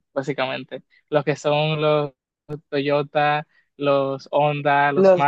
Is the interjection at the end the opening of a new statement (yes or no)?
yes